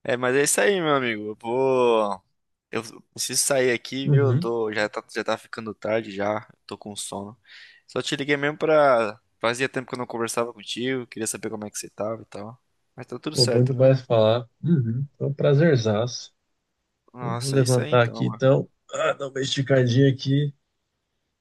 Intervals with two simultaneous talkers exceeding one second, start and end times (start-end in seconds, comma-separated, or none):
17.2-18.4